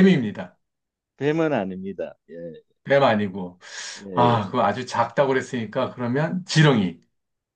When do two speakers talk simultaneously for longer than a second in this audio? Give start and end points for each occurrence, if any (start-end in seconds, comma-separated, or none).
none